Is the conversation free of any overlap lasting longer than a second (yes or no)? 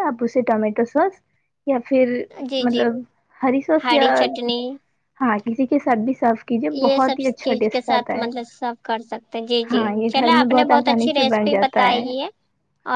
no